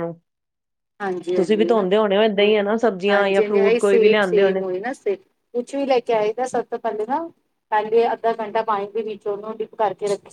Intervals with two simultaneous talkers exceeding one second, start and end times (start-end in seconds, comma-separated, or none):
3.1-4.5